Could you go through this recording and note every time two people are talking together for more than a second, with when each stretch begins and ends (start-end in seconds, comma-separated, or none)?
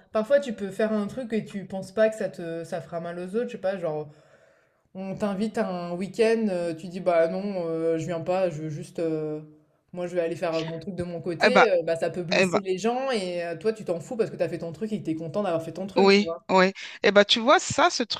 none